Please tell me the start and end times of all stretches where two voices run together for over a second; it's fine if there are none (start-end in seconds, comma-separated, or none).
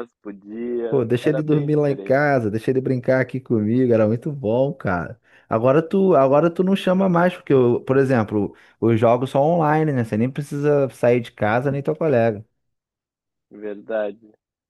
0.9-2.2